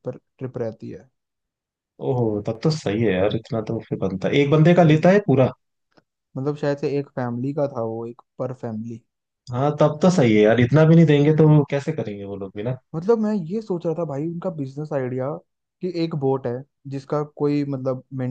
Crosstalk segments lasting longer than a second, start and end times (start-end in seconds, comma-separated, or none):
none